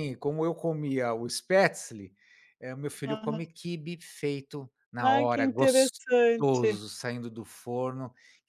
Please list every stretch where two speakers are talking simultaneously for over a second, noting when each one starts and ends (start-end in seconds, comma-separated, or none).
5.0-6.8